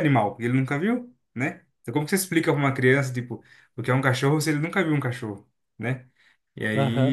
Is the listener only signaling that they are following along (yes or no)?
no